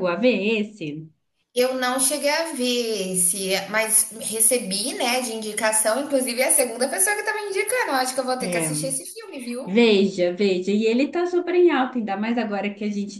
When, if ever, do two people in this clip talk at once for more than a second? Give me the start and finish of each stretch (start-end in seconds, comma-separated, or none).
none